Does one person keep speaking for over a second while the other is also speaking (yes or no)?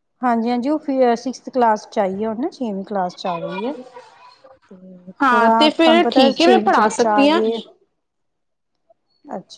yes